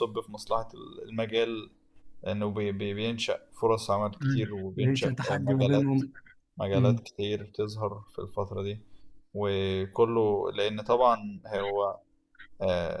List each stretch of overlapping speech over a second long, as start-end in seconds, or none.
4.2-6.0